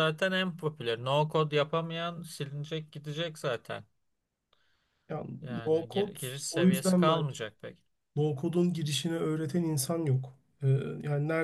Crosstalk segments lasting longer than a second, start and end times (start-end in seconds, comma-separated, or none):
5.4-7.2